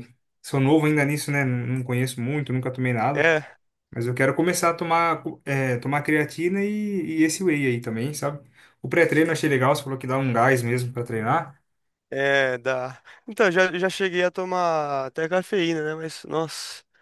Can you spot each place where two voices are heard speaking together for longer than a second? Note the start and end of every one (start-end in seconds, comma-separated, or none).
none